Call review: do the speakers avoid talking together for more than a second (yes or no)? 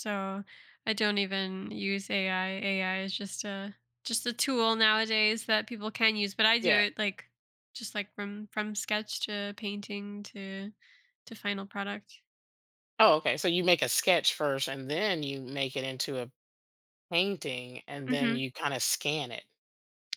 yes